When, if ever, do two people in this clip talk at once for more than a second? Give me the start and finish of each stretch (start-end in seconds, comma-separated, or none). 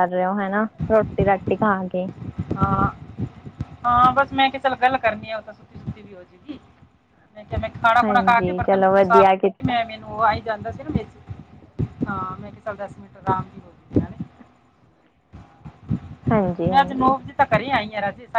8.0-9.8